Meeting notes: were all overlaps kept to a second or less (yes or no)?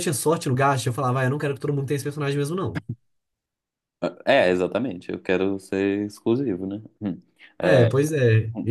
yes